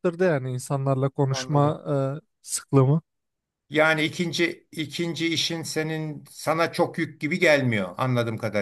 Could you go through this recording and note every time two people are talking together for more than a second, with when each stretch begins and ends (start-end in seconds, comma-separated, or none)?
none